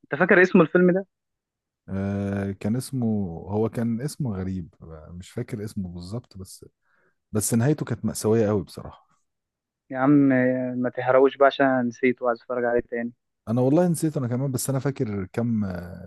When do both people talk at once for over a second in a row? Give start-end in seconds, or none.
none